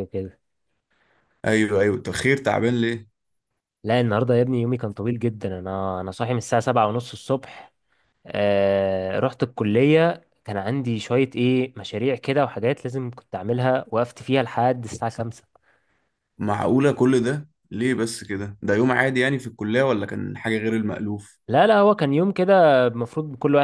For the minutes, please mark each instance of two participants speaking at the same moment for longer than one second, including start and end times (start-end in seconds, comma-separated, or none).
none